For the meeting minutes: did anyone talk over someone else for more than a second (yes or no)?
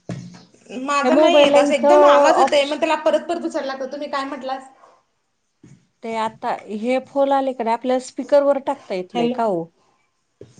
yes